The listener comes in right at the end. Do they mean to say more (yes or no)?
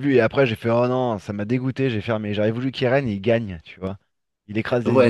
yes